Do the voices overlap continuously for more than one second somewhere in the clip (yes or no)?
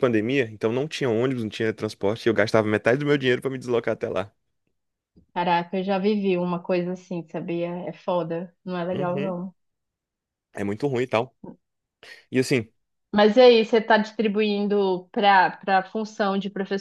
no